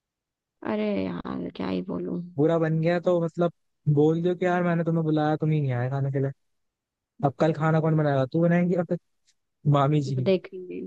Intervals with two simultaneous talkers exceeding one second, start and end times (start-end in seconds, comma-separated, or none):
none